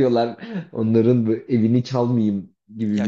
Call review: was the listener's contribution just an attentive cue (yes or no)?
no